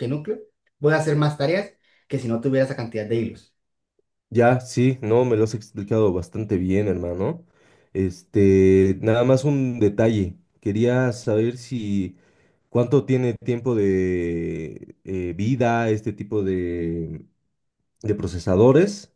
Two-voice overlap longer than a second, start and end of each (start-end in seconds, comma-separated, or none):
none